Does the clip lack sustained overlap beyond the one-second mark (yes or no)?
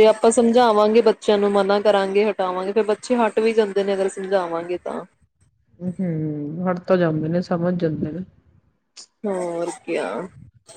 yes